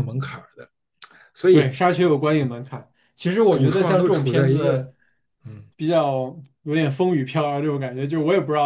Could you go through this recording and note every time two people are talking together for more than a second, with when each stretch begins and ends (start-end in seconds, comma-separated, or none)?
3.5-4.9